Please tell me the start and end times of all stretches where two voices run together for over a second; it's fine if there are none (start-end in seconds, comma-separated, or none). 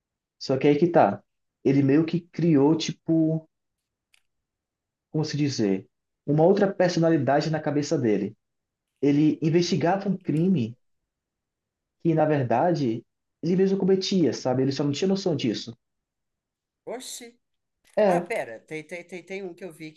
none